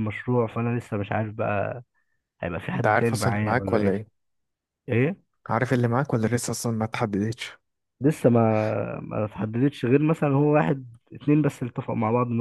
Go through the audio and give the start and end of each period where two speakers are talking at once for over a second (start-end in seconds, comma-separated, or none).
2.7-4.0